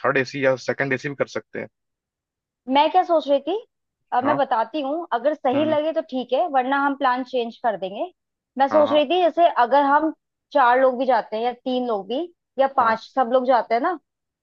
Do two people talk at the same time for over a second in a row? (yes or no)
no